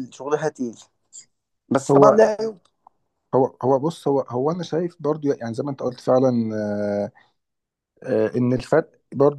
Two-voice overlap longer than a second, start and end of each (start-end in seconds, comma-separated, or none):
none